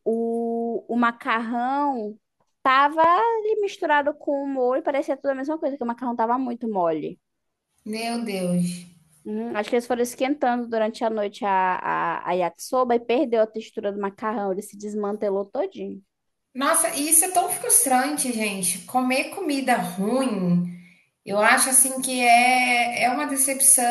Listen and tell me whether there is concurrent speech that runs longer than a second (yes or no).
no